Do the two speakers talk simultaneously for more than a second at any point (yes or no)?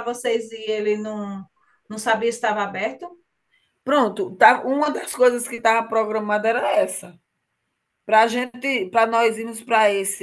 no